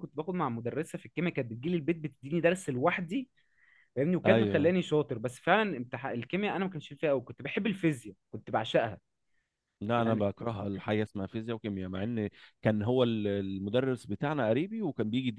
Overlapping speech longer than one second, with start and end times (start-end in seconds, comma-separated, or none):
none